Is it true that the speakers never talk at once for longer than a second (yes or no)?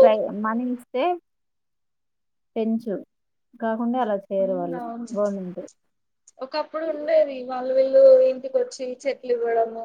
yes